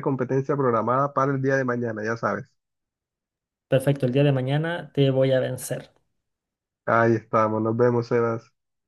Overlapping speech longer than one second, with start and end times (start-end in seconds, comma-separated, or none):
none